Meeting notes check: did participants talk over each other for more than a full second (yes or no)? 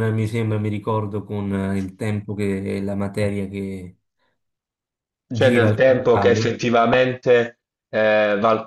yes